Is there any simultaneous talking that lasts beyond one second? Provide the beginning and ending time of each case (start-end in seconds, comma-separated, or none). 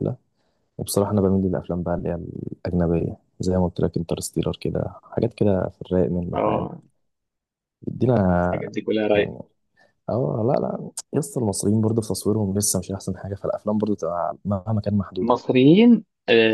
none